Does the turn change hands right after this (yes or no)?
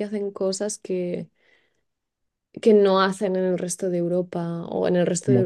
no